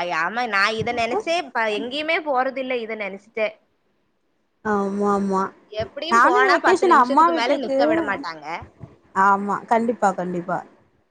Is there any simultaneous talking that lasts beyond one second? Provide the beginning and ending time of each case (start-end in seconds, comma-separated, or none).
6.2-7.8